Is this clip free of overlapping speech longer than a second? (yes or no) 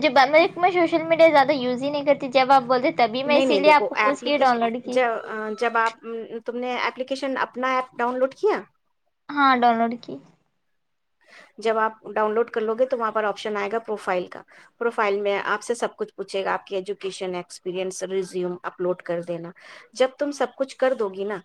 no